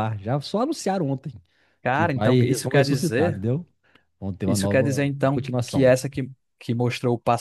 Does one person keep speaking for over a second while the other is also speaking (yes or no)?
yes